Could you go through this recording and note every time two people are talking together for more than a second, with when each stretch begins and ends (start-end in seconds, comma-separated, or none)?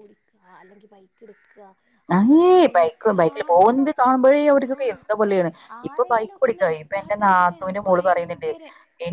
5.9-8.5